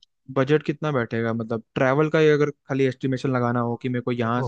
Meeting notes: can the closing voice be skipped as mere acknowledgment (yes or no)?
yes